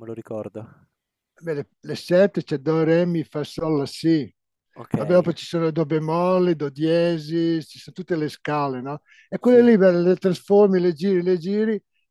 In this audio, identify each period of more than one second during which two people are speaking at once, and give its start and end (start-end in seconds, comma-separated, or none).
none